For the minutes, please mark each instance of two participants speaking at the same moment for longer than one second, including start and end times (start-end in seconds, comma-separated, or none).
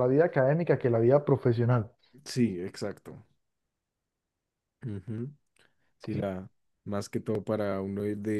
none